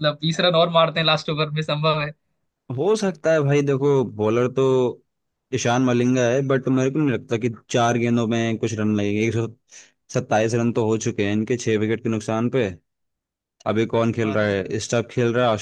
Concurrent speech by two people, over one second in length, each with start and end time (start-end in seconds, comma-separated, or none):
none